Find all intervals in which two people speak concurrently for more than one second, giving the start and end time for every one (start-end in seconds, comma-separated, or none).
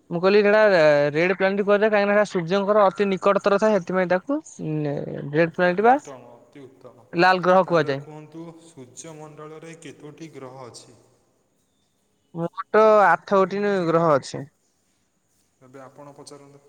none